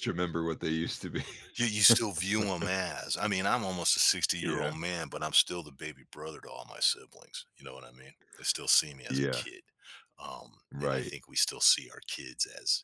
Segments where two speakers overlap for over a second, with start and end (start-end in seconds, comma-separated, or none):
none